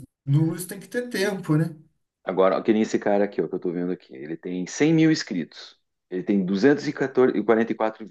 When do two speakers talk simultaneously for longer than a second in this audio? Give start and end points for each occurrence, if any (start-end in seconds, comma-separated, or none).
none